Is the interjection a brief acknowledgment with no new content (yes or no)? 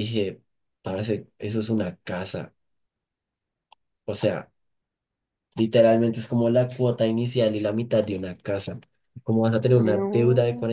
yes